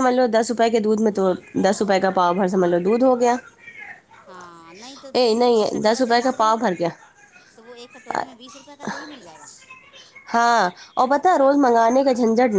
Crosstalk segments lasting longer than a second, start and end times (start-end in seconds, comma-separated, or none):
5.2-6.7